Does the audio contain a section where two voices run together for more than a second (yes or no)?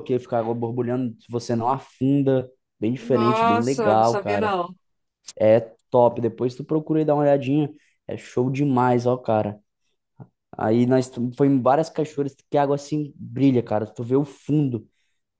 yes